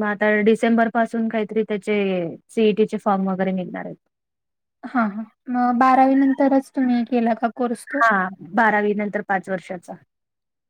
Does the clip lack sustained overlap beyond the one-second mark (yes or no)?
yes